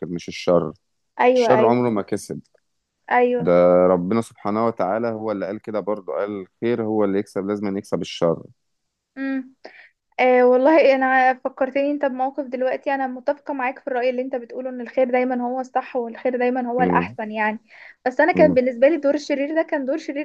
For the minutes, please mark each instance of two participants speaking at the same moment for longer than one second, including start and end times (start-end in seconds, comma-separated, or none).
none